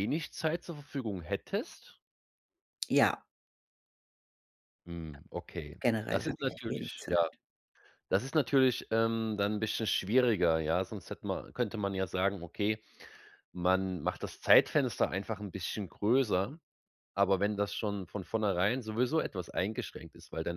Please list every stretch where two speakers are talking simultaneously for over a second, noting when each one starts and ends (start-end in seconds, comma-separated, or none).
5.8-7.2